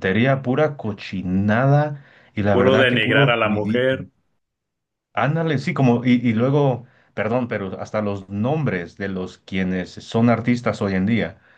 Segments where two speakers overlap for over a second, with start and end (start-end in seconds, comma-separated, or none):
2.5-4.0